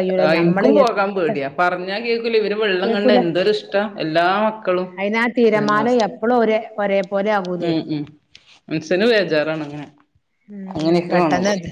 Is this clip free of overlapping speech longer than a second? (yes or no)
yes